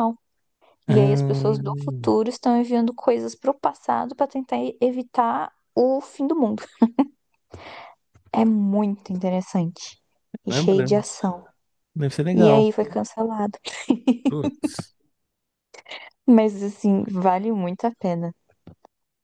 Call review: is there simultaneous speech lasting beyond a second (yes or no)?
yes